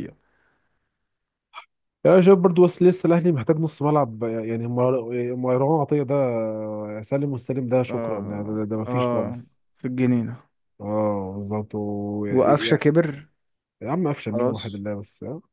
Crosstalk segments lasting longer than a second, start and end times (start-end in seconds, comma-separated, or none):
7.9-9.4